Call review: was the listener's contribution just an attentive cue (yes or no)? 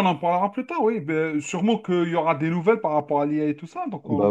no